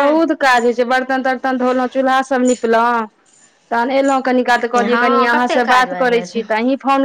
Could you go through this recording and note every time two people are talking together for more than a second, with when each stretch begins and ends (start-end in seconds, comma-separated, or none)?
4.7-6.4